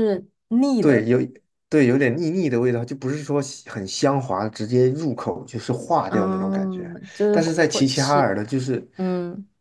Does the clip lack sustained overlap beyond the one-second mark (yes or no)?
no